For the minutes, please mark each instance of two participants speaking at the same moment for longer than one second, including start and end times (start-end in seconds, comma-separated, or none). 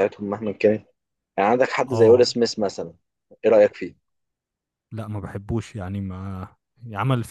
none